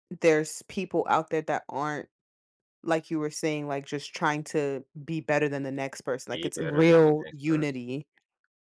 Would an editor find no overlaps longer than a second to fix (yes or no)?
no